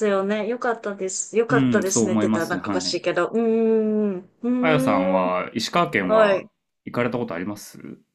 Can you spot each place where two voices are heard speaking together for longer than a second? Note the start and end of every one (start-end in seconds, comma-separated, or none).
1.5-3.0